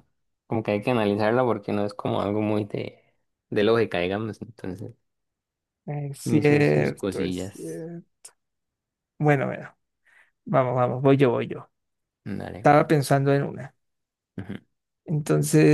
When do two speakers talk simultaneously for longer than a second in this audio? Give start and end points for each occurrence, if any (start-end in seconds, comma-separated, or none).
6.3-7.9